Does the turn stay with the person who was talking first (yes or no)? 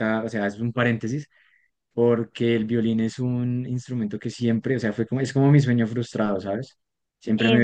yes